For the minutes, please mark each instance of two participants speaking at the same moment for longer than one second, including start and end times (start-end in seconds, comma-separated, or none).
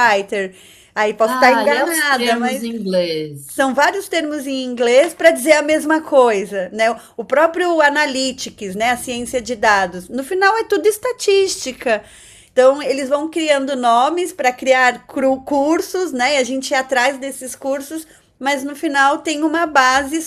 1.3-2.7